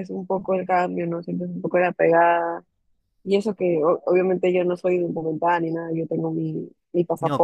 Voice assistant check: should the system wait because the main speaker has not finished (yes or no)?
yes